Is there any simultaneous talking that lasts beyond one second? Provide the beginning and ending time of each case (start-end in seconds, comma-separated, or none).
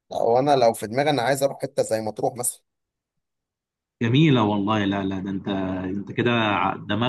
none